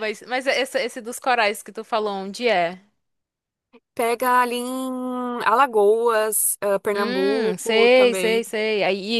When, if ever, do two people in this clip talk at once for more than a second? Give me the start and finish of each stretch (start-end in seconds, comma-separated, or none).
6.9-8.5